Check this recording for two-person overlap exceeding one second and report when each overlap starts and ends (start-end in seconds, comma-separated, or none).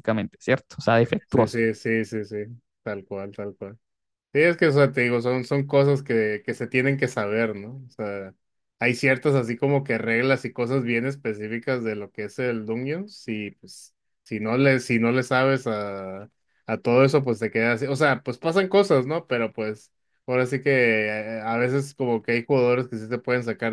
none